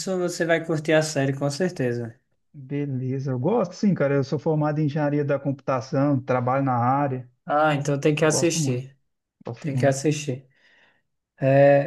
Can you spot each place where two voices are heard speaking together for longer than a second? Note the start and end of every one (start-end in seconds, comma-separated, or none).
none